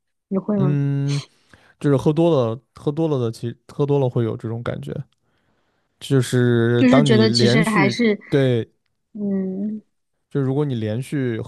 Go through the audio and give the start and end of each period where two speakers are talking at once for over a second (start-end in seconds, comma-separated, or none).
6.8-8.2